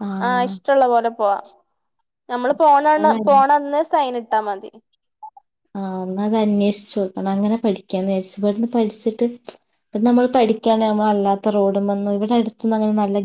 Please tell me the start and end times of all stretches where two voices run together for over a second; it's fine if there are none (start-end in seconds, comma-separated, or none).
none